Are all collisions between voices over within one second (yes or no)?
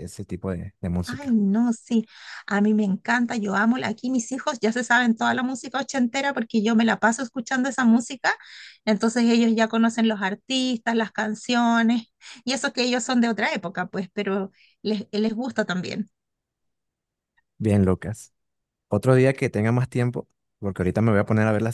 yes